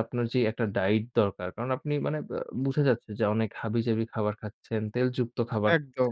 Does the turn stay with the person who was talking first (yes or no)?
yes